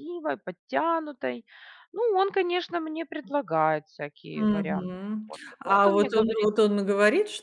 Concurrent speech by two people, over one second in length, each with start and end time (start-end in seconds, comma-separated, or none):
4.3-6.5